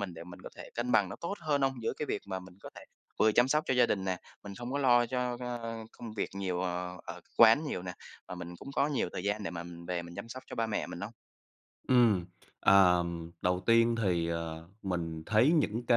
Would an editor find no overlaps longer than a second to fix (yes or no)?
yes